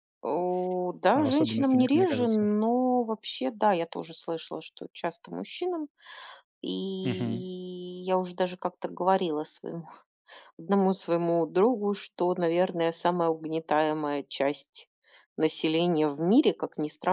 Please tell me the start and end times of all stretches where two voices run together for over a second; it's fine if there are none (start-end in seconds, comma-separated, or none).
1.1-2.5